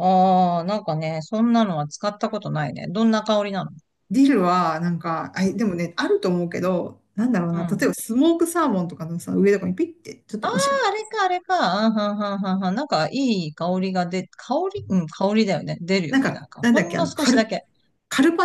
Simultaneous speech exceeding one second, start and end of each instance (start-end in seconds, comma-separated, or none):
16.1-17.5